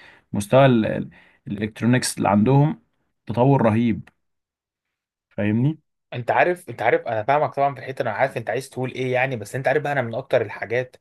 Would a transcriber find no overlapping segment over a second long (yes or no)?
yes